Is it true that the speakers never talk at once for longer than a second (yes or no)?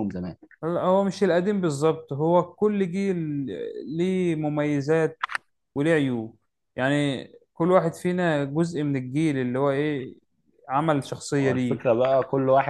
yes